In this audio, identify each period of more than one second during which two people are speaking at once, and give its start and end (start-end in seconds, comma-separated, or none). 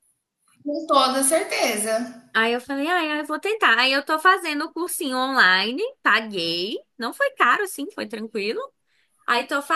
none